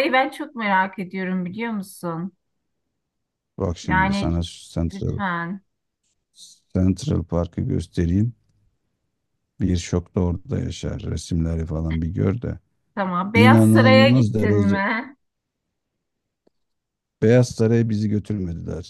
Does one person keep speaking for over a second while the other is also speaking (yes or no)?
yes